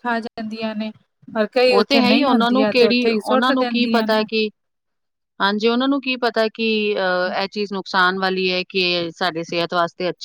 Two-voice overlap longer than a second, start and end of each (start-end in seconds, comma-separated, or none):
1.7-4.2